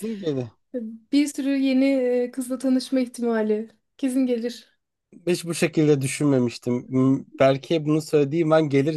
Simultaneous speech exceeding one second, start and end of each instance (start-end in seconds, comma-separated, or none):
none